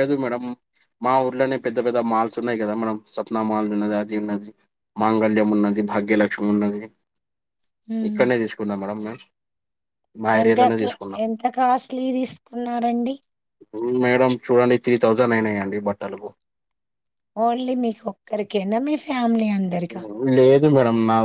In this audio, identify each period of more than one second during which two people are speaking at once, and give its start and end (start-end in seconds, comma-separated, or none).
none